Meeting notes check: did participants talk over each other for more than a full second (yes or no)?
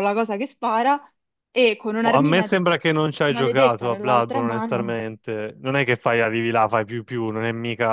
yes